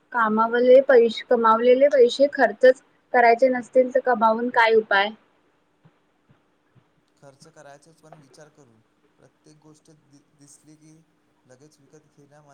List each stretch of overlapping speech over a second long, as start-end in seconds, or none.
none